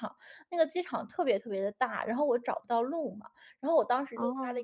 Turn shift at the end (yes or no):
no